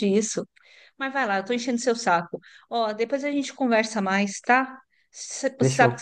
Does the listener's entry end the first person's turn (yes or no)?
no